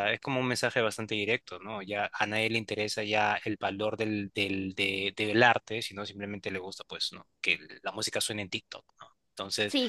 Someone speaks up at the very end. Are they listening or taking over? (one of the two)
listening